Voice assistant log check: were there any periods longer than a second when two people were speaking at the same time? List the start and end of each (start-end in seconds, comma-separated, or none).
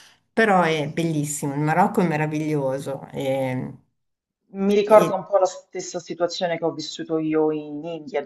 none